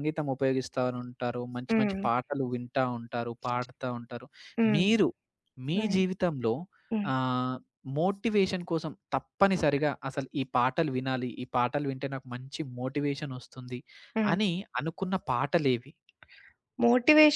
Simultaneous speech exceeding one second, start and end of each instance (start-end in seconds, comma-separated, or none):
none